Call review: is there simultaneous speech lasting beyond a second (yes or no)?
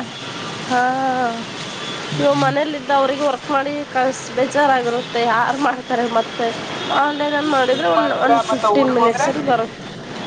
yes